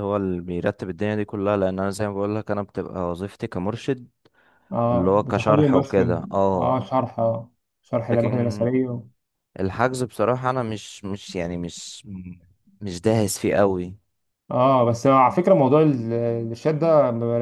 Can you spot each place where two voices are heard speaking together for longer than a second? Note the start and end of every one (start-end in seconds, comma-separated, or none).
4.9-6.8